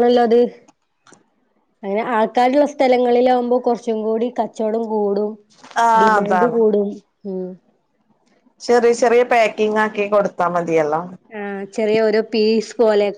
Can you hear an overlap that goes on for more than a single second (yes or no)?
no